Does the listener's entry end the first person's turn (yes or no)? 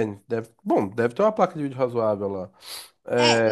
yes